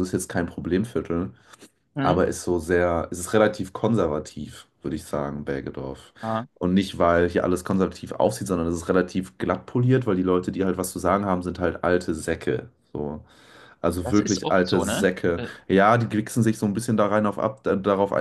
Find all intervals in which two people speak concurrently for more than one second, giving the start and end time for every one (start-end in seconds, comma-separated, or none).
14.0-15.5